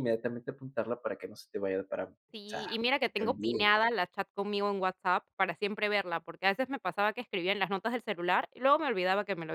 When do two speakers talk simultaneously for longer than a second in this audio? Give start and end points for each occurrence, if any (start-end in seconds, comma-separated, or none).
2.3-3.7